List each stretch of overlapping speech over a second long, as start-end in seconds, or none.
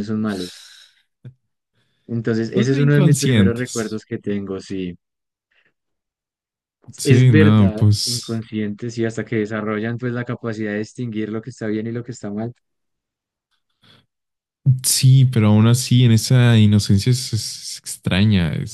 2.5-4.0, 7.0-8.4